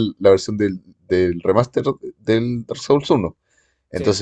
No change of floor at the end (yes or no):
yes